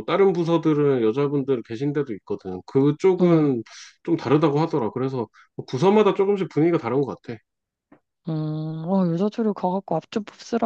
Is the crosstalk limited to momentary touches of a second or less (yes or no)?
yes